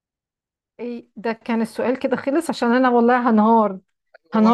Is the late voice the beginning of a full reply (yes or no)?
no